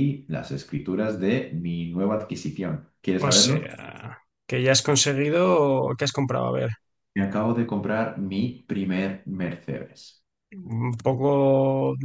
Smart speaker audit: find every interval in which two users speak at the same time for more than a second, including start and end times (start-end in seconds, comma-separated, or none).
none